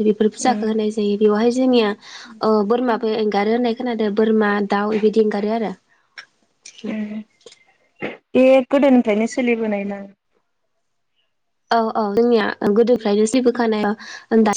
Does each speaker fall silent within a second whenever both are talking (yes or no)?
yes